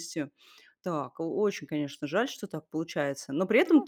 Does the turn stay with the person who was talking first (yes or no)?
yes